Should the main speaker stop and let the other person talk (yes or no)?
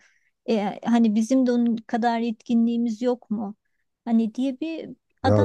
no